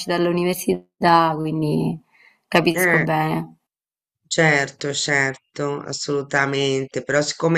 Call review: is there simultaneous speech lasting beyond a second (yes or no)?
no